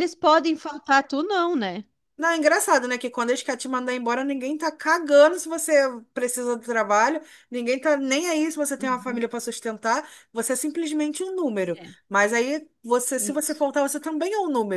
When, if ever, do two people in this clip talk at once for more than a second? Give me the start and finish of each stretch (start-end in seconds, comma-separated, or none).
none